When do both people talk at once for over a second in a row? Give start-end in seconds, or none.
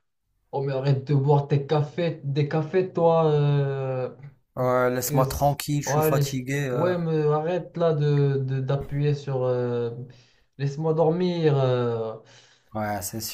5.0-6.9